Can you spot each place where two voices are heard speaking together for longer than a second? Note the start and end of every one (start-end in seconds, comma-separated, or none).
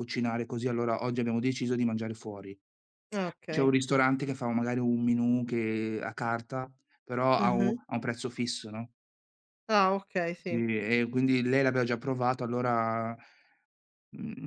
none